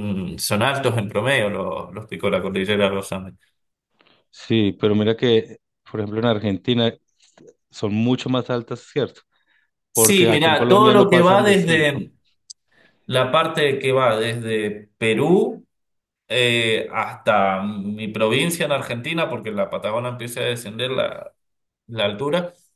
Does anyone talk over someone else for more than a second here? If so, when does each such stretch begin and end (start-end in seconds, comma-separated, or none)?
9.9-12.1